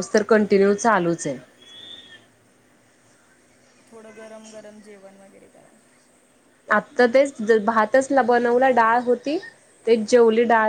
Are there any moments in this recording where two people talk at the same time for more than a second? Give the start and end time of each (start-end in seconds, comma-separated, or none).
none